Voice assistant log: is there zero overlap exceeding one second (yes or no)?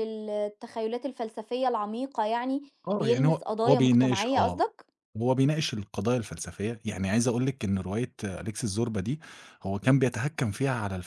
no